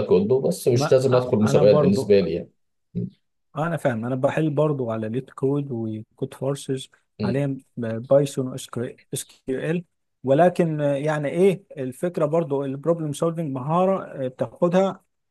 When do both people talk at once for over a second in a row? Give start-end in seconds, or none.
0.7-2.1